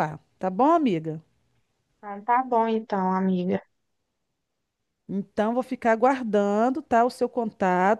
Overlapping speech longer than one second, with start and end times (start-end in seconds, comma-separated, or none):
none